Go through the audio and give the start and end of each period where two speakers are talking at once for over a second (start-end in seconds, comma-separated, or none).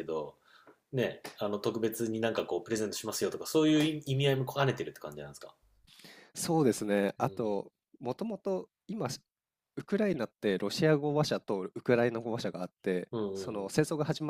none